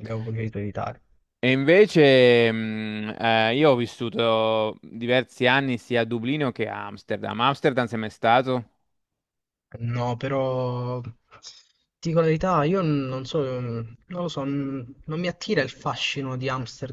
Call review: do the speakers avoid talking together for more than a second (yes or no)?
yes